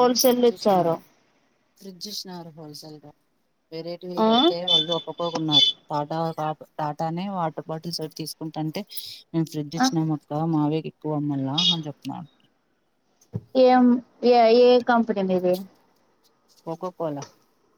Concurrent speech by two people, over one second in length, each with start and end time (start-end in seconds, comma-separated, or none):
none